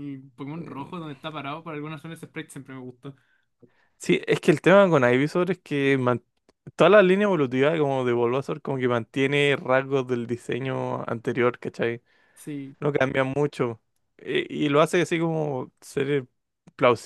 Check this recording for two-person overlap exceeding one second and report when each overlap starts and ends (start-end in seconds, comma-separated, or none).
none